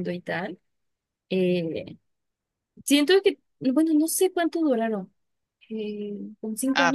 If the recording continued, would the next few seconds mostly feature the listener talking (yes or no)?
yes